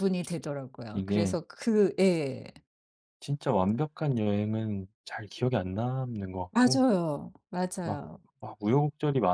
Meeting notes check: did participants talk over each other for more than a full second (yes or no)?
no